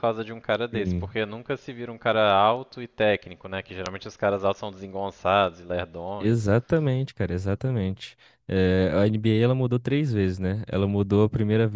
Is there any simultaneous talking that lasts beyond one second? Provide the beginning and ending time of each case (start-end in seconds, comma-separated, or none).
none